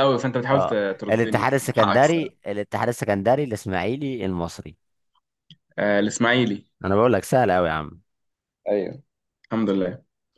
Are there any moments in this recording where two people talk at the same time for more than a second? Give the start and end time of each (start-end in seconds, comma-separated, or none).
0.5-2.5